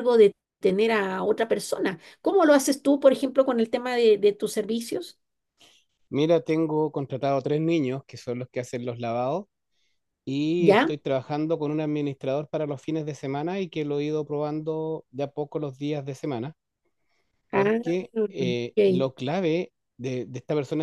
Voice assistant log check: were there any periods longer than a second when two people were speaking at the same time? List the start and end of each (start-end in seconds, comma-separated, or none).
17.5-19.1